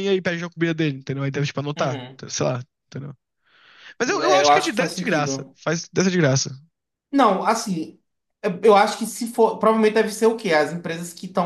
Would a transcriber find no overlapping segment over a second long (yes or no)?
no